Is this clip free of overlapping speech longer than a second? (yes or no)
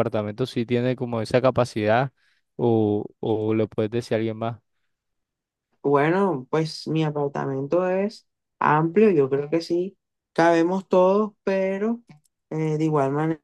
yes